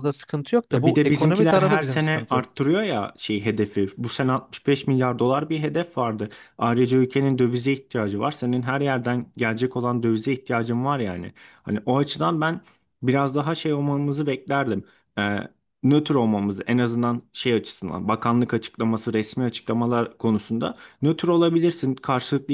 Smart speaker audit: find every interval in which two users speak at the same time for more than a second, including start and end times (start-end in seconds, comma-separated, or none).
0.7-2.5